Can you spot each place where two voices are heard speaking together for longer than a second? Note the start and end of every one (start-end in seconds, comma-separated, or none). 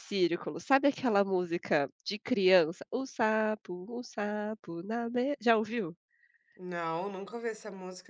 none